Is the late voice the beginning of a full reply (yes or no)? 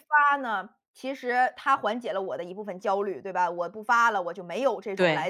no